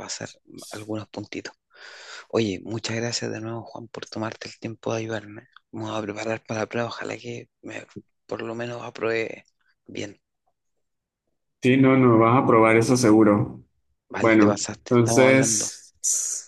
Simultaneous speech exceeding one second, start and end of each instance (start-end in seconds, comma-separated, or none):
14.2-15.7